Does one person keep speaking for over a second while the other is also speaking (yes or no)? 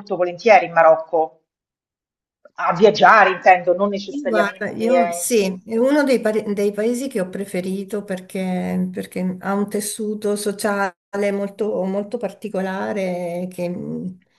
yes